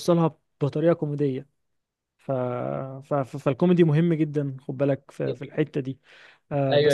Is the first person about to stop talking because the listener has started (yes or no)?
yes